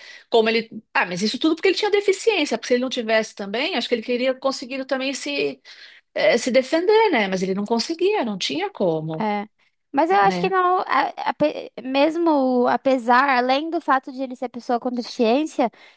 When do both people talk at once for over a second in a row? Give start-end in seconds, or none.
none